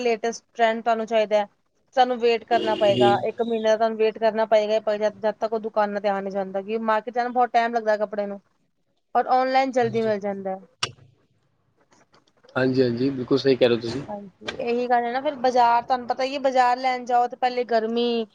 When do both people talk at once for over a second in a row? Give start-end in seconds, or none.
none